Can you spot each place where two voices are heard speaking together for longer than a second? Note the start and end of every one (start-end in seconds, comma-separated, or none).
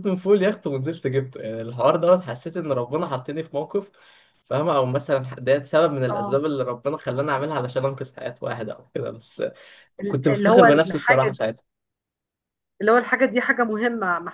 10.1-11.4